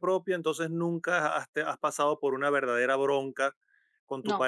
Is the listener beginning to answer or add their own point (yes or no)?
no